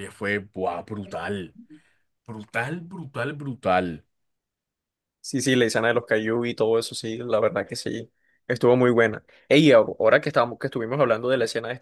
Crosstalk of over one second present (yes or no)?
no